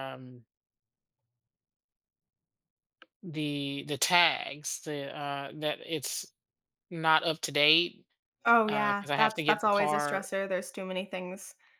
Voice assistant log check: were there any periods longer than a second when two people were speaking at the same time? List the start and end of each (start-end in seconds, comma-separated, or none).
8.7-10.2